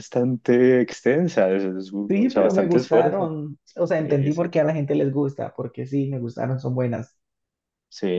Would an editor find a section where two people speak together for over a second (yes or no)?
yes